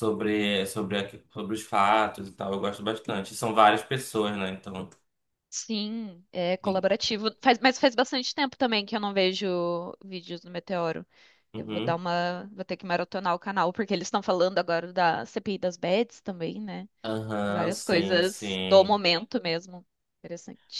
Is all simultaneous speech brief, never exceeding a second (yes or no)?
no